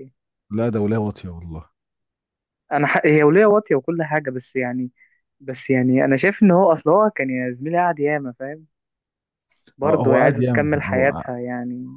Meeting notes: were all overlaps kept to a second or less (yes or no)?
no